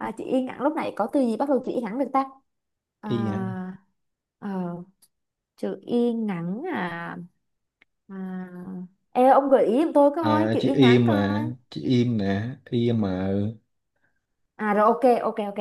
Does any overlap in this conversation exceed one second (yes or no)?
yes